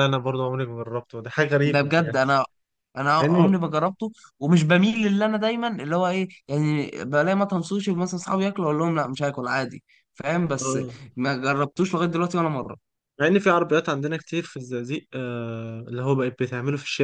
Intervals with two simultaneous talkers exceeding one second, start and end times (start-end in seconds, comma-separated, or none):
none